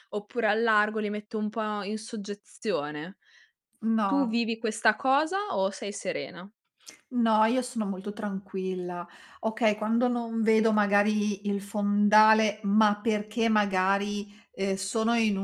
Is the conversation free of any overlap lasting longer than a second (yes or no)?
yes